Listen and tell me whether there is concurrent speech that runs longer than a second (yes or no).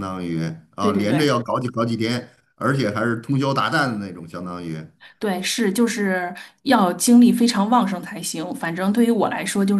no